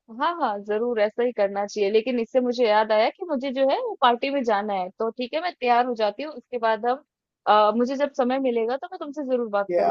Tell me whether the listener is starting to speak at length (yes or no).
yes